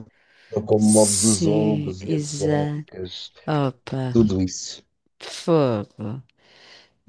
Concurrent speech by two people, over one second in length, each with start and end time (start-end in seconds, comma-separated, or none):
0.8-2.8